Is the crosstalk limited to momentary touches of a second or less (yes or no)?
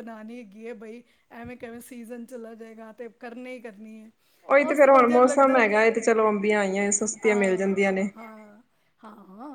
yes